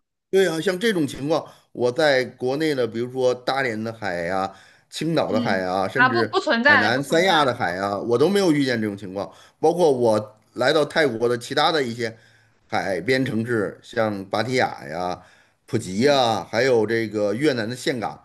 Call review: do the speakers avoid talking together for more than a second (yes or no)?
no